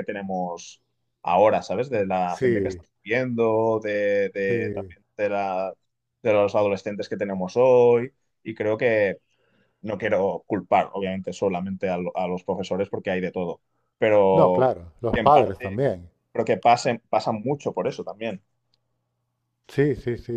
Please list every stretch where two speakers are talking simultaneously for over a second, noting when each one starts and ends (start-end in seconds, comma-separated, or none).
14.3-15.8